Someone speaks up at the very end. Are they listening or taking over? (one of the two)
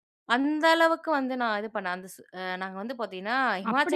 taking over